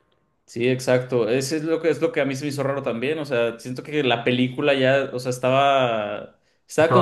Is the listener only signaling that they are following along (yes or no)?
yes